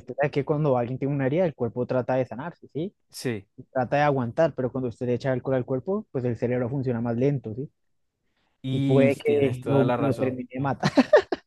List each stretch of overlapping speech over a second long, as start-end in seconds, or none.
8.7-10.4